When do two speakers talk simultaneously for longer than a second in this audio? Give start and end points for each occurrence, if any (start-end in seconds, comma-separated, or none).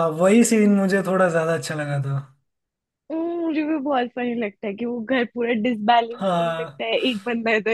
none